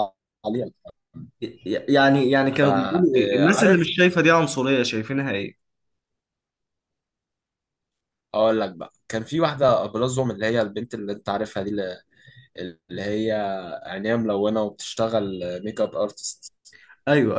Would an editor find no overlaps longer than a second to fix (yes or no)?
no